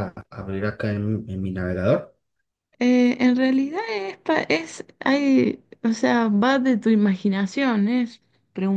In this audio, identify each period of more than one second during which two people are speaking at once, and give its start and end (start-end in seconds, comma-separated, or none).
none